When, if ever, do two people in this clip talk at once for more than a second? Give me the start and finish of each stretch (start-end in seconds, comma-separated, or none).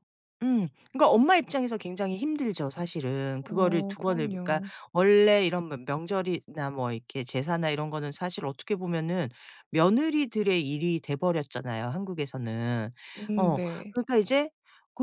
3.4-4.7